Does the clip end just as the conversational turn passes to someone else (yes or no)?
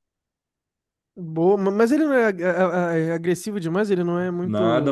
yes